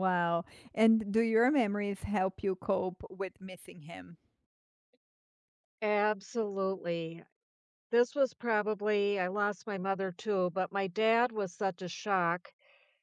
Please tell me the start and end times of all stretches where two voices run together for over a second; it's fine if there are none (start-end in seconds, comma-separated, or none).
none